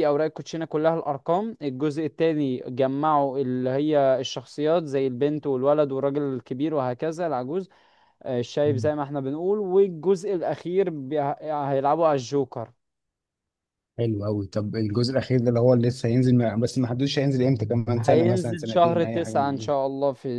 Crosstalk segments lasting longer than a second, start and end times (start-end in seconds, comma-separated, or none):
18.0-19.7